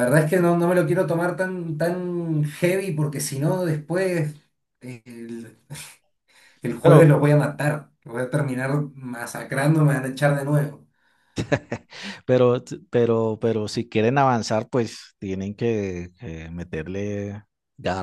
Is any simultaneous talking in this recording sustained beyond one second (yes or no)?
no